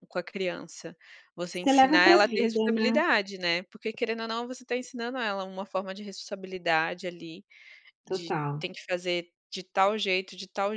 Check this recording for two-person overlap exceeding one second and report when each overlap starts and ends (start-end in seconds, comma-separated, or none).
1.5-3.0